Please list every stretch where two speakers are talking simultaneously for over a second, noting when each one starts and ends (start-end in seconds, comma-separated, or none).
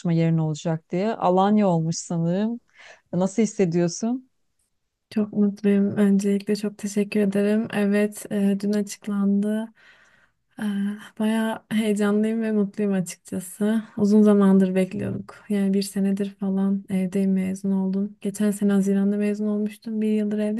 none